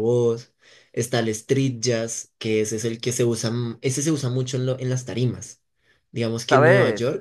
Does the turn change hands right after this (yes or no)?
no